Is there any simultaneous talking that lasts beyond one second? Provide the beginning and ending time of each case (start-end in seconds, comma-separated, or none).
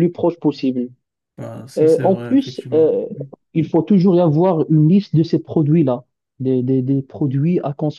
1.8-3.1